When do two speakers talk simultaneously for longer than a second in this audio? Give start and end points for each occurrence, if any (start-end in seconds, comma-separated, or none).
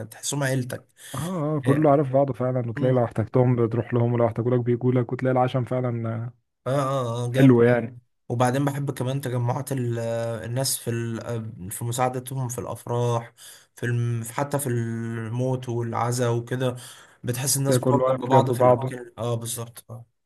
17.7-18.9